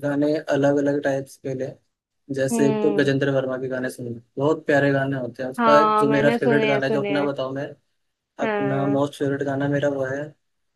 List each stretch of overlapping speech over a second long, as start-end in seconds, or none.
5.6-7.3